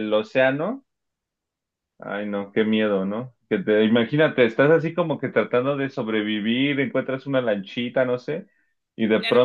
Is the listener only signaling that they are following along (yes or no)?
no